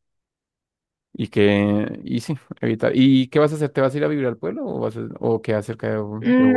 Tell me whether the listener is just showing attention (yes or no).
no